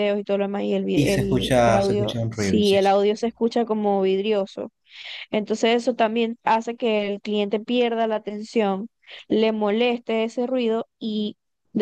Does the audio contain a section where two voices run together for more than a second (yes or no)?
yes